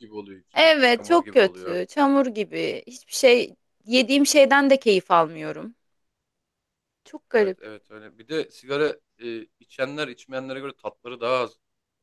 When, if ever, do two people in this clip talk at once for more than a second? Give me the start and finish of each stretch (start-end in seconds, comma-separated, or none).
0.5-1.8